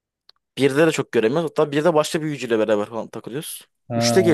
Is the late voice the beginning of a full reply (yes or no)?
no